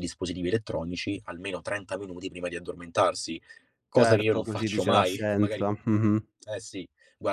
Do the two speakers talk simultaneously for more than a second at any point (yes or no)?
yes